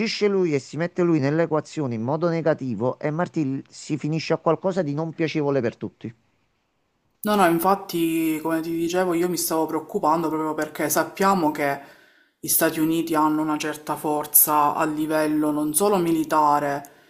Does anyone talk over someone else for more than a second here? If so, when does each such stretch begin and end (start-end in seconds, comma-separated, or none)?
none